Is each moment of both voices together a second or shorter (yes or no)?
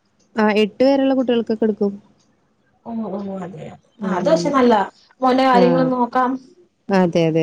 yes